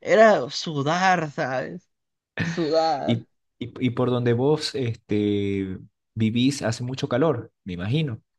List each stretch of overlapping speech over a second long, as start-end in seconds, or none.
none